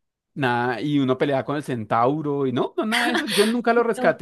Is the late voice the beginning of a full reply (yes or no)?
yes